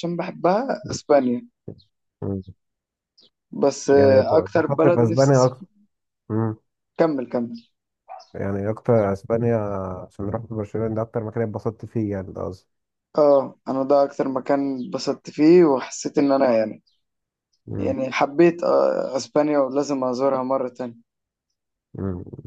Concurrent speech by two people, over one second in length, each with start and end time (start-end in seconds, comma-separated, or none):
3.9-5.7